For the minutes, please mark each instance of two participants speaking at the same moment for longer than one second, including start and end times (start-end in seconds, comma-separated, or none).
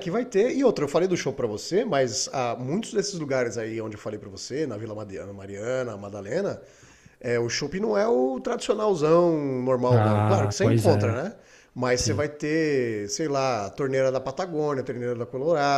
9.9-11.2